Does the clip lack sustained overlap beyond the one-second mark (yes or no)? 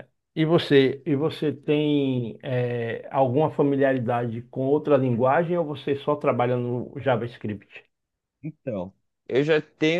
yes